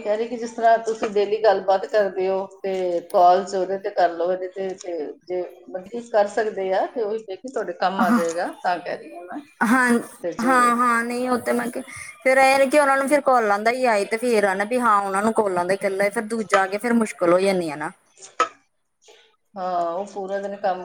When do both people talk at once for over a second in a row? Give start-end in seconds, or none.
none